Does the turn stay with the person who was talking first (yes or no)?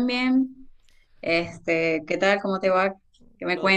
no